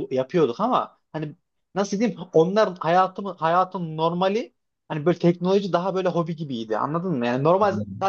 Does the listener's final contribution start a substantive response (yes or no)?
no